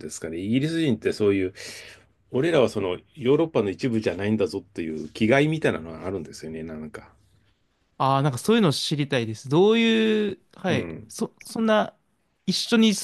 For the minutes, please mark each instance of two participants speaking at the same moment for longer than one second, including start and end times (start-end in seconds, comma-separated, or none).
none